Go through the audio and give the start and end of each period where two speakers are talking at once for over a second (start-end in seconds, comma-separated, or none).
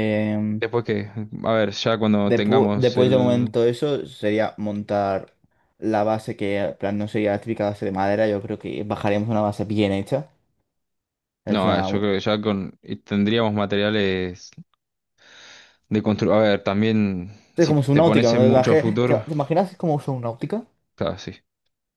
2.2-3.5, 17.6-19.2